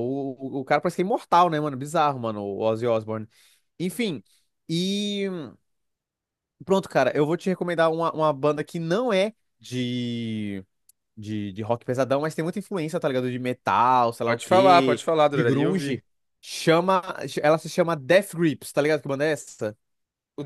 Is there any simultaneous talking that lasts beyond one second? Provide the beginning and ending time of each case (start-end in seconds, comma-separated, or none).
14.2-16.0